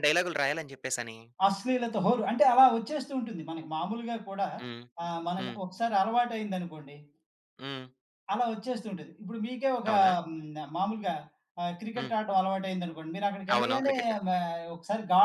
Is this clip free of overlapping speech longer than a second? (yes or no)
yes